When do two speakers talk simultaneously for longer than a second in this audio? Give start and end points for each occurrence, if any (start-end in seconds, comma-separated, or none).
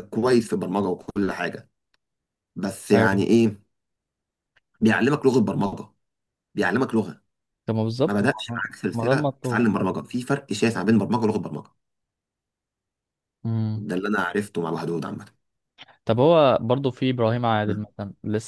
8.1-9.7